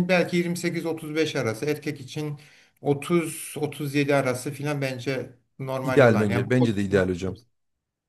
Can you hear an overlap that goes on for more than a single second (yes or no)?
yes